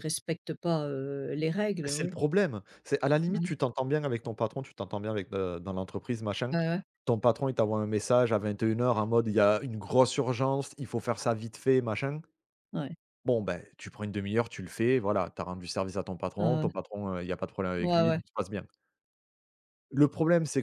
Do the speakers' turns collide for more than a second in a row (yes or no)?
no